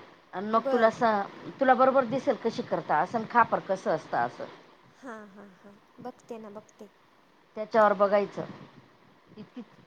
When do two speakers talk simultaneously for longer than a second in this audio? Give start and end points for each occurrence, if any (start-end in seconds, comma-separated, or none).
none